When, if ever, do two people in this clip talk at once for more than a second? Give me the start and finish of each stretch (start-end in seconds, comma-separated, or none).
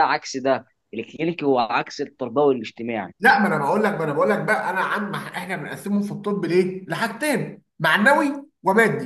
none